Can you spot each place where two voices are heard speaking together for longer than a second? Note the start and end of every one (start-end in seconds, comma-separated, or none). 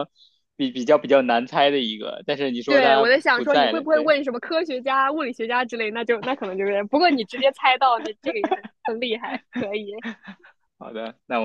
2.6-4.2